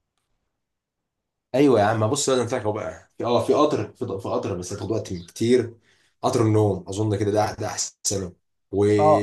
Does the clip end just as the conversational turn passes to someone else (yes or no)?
no